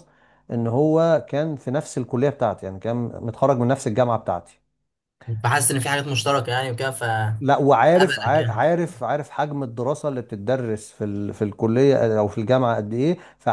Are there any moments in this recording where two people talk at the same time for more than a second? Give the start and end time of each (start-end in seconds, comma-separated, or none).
7.4-8.7